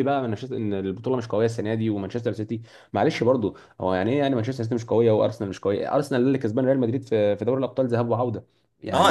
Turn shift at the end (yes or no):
yes